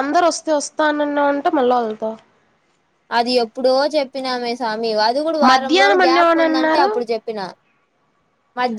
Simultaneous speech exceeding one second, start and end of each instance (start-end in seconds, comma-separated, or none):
5.5-6.9